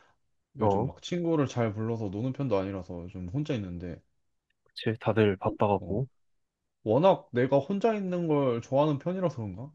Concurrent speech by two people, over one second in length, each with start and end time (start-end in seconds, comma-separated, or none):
none